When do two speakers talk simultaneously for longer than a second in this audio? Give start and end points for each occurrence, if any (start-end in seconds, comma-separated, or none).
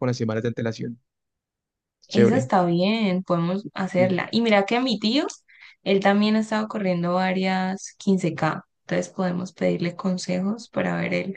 none